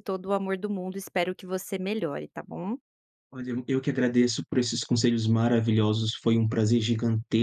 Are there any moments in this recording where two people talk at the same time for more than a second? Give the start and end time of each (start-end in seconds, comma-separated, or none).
none